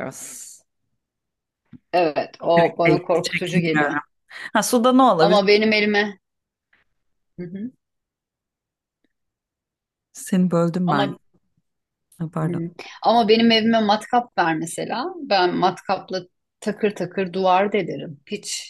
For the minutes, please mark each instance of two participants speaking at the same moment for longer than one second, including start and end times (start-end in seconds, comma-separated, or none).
2.6-3.9